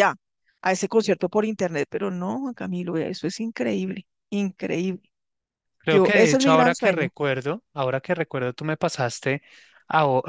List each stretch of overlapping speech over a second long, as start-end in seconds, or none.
5.9-7.1